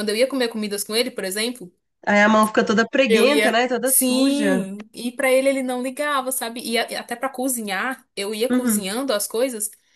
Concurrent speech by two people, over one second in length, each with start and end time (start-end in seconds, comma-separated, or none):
3.1-4.6